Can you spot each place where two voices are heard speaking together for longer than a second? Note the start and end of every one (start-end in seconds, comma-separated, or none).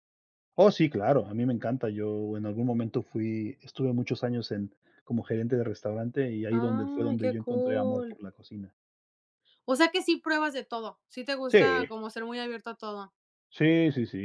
6.5-8.2